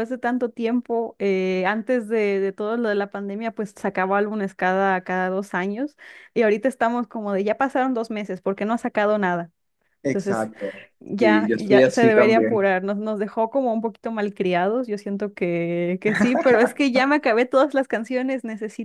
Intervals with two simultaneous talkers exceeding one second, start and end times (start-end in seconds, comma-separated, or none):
11.2-12.7